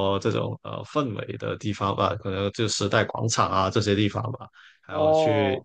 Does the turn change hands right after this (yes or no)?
no